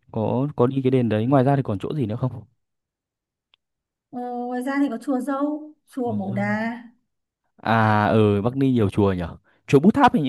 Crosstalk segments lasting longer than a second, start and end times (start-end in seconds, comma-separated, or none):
none